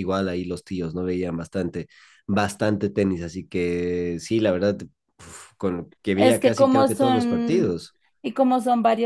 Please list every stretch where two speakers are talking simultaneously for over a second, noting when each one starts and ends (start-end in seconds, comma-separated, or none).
6.2-7.8